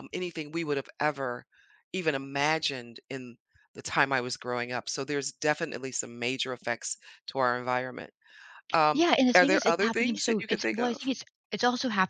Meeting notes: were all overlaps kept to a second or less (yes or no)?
no